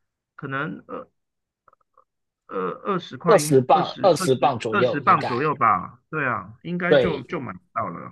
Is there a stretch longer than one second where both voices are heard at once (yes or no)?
yes